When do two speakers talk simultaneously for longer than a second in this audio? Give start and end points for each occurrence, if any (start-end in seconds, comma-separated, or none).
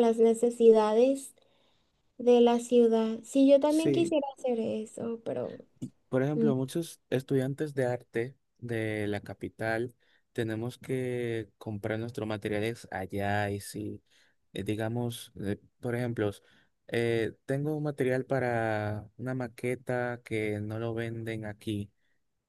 none